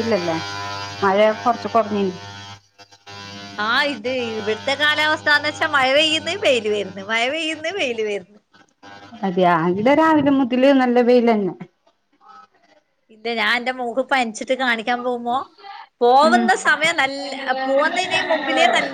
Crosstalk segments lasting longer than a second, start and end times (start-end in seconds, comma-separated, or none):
none